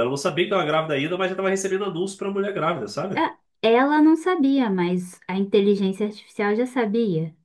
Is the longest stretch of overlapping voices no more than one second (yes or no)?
yes